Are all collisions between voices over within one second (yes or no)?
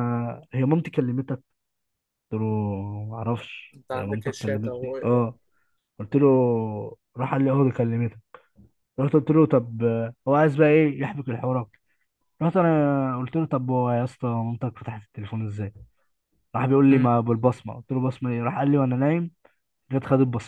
no